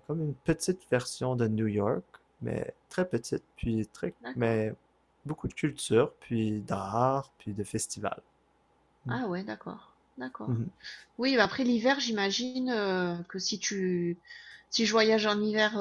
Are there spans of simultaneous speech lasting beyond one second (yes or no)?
no